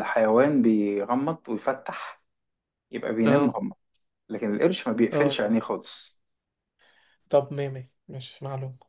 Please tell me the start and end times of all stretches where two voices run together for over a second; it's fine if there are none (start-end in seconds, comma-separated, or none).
none